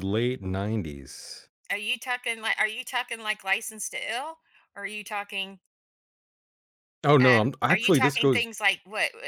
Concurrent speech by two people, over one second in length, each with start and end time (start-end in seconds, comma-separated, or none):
7.2-8.5